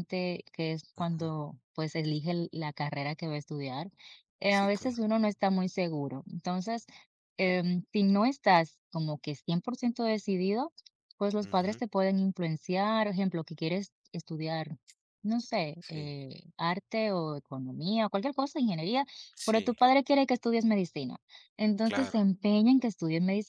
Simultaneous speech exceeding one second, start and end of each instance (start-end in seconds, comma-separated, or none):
none